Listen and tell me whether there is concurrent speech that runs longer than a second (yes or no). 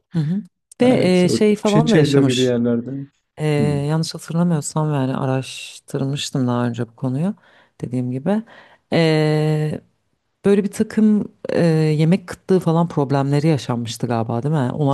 yes